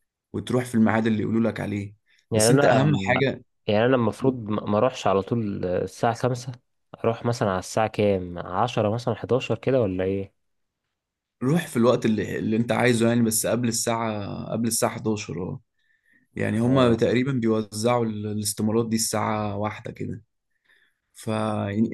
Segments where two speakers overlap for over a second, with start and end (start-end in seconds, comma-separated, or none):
none